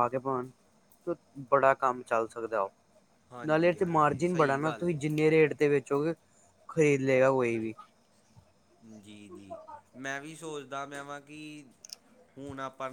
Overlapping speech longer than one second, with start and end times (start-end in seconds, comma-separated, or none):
3.5-5.0